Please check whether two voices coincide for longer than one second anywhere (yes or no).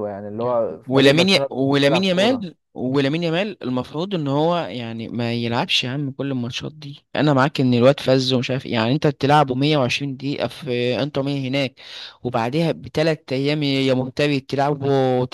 yes